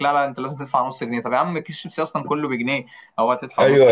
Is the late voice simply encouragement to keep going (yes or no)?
no